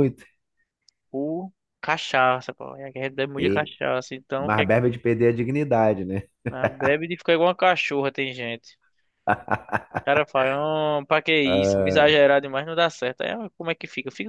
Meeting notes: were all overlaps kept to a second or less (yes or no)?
yes